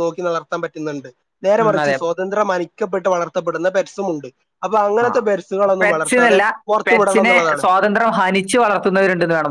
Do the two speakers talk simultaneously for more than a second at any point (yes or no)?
no